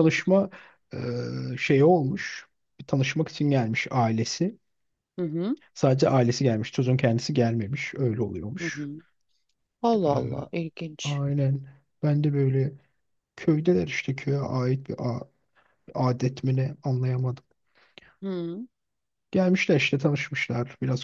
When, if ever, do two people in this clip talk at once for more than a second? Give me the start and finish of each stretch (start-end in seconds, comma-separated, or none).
none